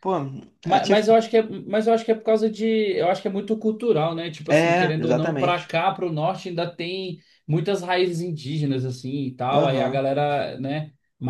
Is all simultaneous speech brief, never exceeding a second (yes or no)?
no